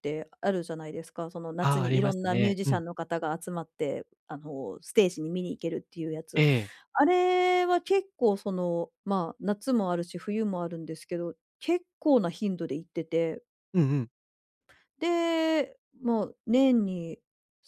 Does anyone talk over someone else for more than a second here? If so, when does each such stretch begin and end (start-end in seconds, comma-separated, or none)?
1.6-2.8